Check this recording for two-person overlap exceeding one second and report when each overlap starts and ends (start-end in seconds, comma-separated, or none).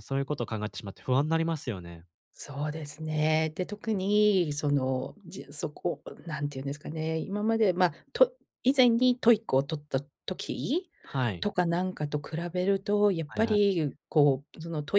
none